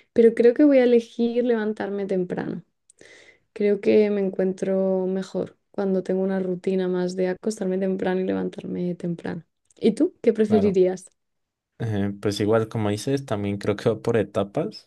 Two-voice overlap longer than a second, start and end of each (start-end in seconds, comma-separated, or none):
none